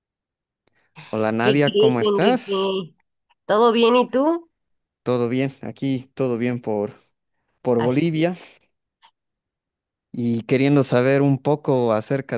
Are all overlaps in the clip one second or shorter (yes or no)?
no